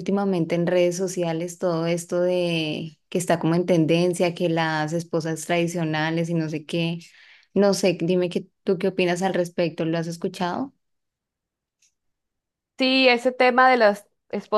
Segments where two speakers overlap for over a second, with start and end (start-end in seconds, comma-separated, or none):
none